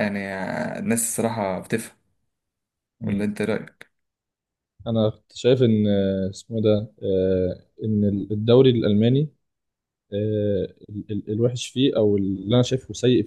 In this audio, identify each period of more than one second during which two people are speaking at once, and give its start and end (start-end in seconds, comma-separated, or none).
none